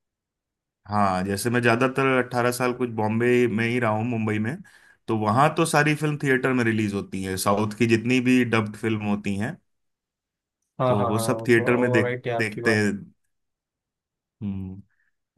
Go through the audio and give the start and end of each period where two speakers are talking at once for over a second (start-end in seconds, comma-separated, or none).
10.9-12.8